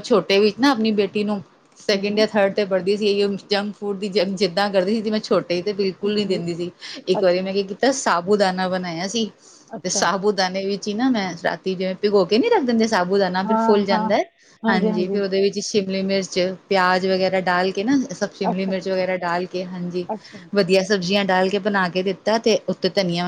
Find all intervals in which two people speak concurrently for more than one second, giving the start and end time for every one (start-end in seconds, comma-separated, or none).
none